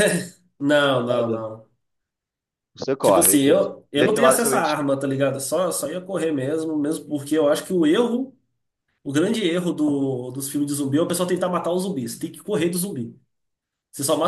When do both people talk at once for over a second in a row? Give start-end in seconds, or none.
3.0-4.8